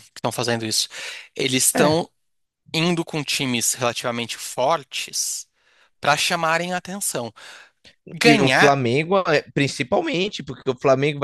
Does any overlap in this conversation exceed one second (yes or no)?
no